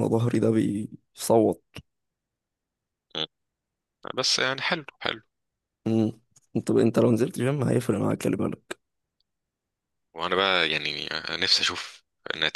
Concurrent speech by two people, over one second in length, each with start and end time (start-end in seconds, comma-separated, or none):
none